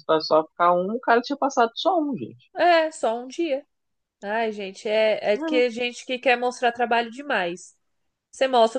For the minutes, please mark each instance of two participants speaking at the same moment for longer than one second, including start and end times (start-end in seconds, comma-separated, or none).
none